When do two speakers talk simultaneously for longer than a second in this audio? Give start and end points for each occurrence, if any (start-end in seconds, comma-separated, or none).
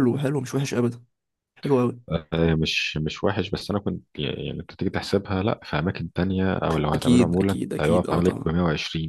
6.9-8.5